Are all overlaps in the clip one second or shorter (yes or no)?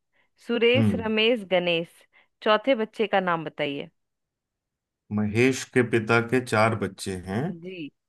yes